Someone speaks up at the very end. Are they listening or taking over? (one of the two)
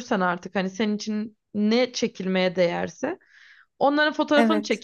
listening